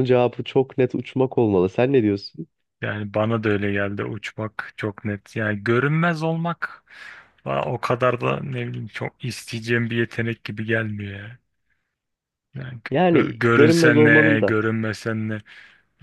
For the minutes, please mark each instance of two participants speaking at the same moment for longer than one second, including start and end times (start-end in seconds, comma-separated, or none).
12.9-14.5